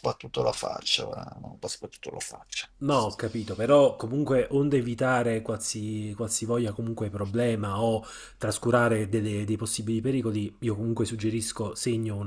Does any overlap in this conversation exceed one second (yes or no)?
no